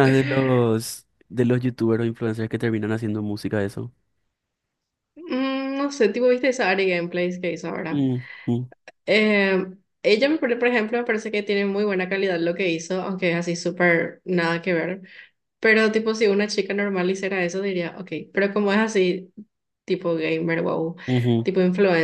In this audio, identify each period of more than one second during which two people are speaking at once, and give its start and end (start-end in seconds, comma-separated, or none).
none